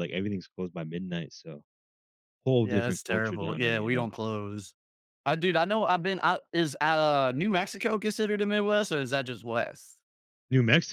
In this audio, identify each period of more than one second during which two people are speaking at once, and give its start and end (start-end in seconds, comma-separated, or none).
2.6-4.1